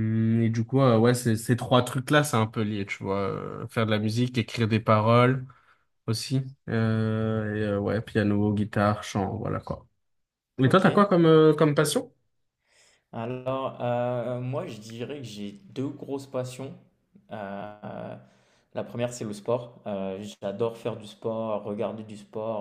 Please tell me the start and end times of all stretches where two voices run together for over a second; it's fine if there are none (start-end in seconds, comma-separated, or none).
none